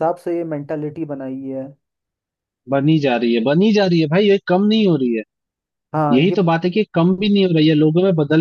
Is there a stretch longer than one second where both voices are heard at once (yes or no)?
no